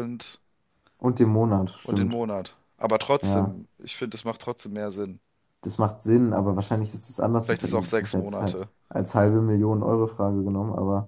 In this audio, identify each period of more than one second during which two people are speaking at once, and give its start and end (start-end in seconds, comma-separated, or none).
7.4-8.7